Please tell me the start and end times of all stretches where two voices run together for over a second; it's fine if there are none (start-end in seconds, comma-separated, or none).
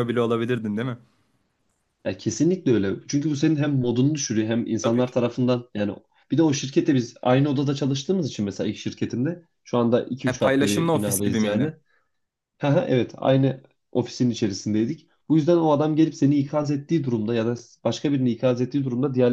10.3-11.7